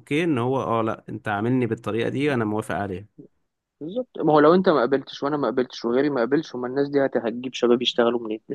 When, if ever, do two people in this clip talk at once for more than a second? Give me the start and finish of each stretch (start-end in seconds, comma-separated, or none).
none